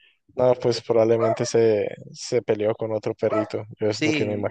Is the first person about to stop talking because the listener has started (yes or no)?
yes